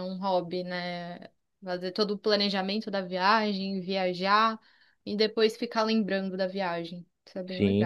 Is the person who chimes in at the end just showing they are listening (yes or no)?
no